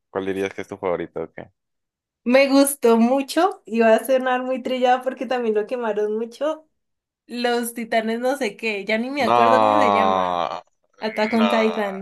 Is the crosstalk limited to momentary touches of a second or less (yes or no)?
no